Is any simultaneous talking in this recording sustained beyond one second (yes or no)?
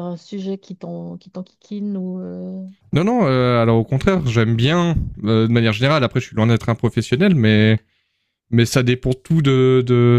no